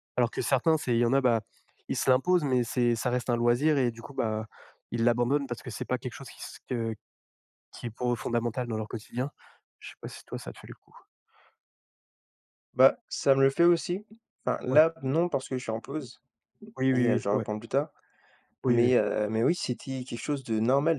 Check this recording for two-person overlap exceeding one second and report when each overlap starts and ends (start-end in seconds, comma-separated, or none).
none